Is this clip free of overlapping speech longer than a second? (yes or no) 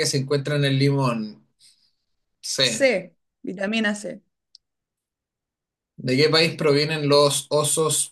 yes